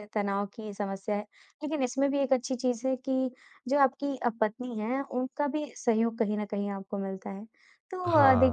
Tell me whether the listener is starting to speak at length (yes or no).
no